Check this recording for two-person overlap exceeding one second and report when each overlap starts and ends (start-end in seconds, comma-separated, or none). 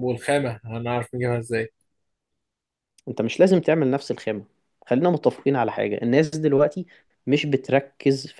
none